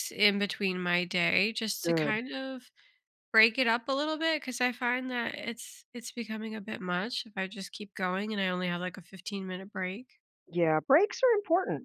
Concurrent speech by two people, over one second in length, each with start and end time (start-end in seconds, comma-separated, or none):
none